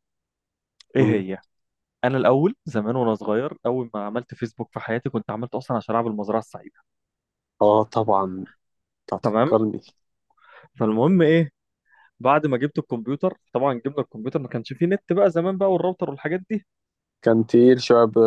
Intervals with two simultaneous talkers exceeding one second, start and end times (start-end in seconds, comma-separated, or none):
none